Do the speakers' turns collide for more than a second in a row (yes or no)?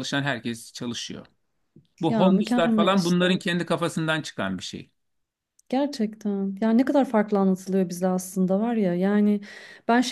yes